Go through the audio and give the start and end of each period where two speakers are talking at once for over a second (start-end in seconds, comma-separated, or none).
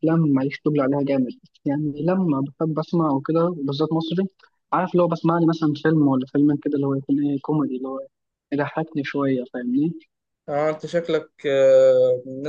none